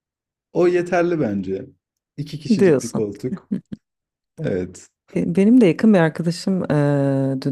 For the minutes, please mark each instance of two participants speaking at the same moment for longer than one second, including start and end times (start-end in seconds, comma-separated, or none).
none